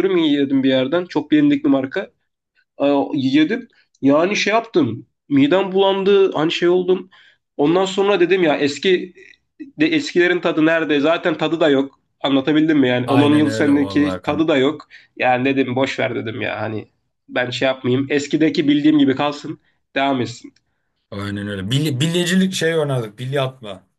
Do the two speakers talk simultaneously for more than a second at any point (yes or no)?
yes